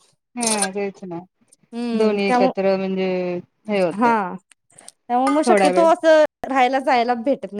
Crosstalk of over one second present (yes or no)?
no